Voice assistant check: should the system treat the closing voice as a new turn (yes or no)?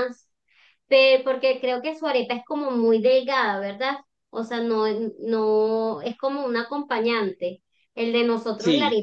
no